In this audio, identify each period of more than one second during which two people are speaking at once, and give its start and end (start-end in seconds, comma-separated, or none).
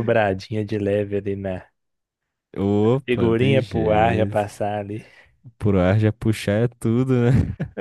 3.0-4.4